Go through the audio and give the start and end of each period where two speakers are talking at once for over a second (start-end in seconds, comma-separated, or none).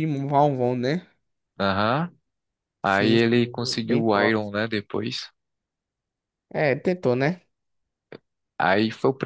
2.8-4.5